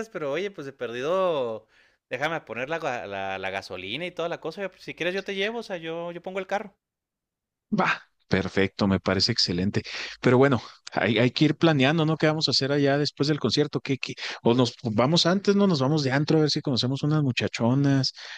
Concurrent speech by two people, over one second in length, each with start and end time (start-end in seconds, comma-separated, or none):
none